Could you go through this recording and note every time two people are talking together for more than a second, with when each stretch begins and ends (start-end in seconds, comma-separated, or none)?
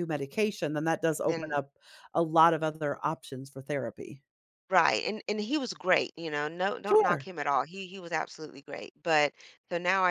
none